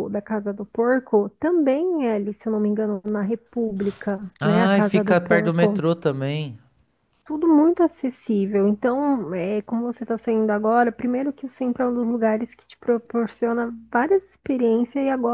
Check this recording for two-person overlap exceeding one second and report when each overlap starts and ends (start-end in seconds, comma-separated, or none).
4.4-5.8